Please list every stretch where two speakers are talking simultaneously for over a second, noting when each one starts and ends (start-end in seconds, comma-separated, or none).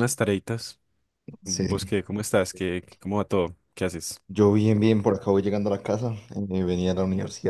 none